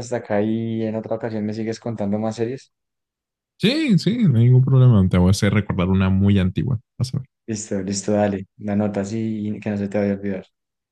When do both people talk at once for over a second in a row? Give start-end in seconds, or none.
none